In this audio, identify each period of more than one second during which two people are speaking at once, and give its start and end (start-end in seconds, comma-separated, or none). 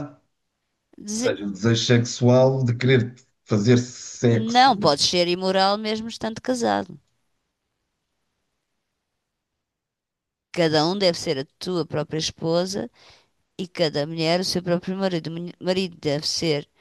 none